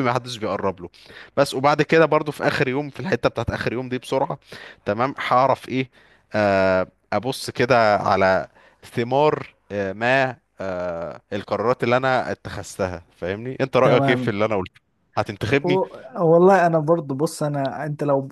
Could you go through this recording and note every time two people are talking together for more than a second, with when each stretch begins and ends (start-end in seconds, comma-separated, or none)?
none